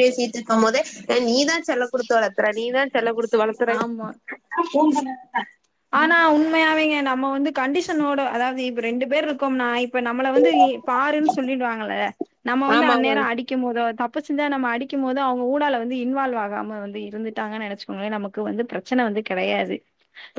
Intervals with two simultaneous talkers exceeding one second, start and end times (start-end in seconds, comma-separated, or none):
none